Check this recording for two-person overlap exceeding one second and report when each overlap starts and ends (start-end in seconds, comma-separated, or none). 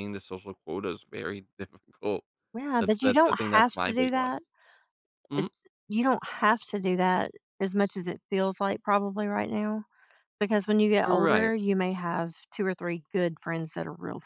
2.8-4.3